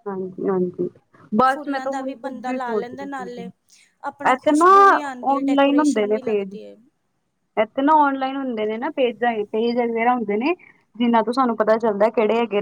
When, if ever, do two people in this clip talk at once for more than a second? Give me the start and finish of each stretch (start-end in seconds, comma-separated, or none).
5.3-6.5